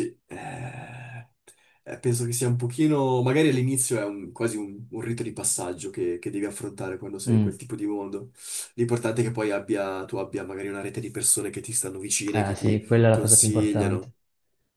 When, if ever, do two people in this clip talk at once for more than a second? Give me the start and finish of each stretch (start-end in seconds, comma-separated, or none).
12.3-14.1